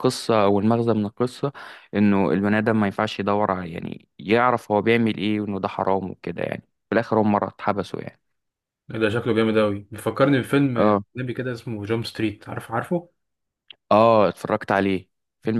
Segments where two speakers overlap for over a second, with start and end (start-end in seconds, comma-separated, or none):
none